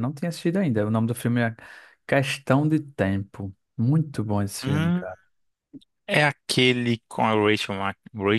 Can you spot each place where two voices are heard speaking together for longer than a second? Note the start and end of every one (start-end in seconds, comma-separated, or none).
none